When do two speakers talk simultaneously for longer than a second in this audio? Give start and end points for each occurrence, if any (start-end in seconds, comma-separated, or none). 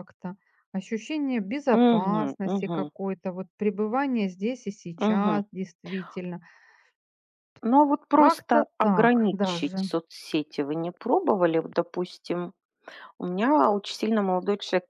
1.7-2.9, 8.1-9.9